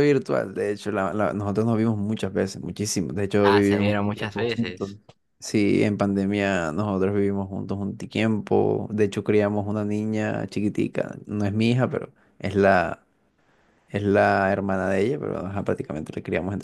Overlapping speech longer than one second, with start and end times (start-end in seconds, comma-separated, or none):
3.4-4.9